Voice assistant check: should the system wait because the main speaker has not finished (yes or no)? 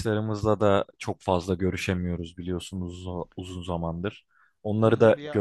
yes